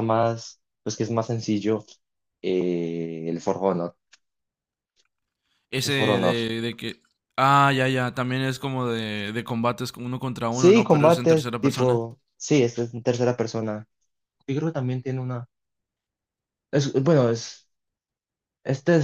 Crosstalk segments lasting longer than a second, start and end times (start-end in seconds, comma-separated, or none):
10.5-12.0